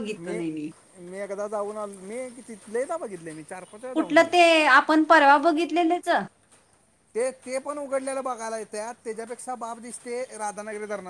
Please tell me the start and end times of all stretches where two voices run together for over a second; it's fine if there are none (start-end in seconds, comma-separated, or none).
none